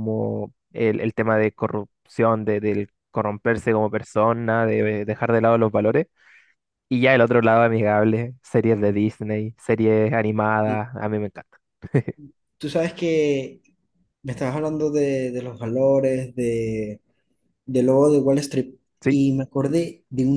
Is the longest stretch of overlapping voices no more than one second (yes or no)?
yes